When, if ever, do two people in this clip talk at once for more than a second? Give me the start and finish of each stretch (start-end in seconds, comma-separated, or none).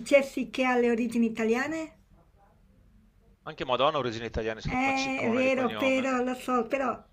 4.6-6.1